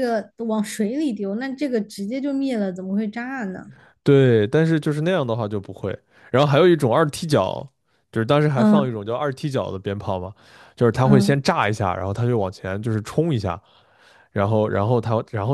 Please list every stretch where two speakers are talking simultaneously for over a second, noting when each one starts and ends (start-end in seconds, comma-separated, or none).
none